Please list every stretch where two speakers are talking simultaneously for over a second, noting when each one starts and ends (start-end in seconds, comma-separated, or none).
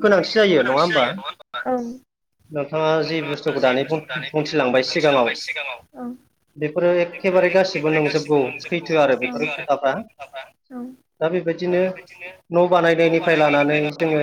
7.1-9.9